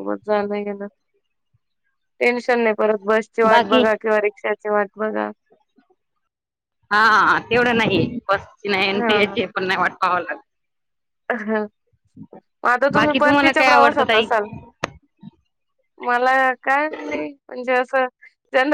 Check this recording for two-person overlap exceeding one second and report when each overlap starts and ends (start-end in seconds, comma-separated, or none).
12.9-14.2